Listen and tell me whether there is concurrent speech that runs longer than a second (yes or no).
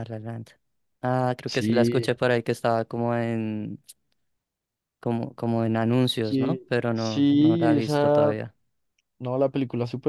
yes